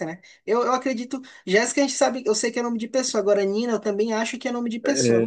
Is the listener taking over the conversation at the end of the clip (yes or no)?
yes